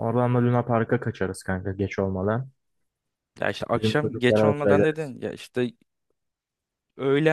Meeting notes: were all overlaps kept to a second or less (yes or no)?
no